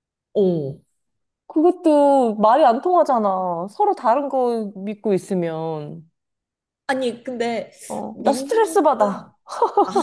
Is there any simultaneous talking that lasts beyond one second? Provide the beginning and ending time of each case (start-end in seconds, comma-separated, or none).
8.1-9.3